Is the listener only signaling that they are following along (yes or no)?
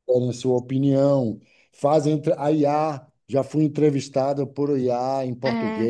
no